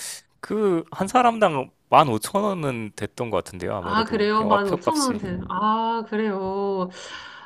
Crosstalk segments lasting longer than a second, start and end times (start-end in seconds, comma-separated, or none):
3.8-5.2